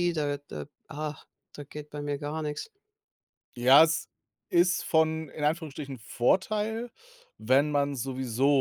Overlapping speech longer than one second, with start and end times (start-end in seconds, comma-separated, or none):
none